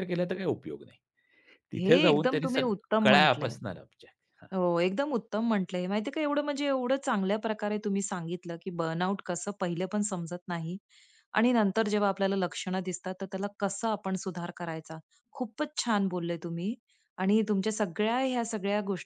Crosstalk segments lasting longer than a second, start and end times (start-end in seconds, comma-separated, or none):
1.8-3.6